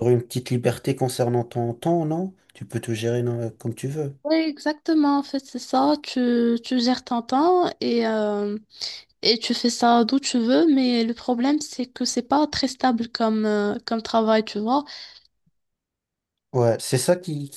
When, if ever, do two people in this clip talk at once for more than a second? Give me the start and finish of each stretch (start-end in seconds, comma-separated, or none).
none